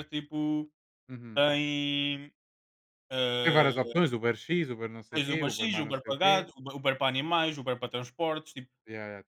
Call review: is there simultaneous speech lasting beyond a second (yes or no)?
yes